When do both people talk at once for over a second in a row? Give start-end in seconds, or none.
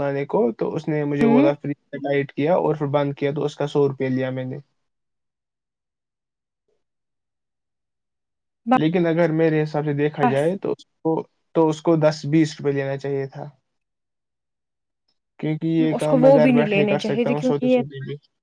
16.0-17.8